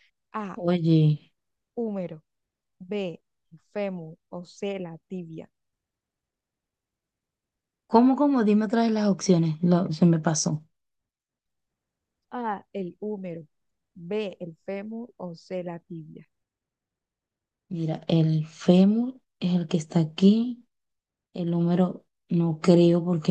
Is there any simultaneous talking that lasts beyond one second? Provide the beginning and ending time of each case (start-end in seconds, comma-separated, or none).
none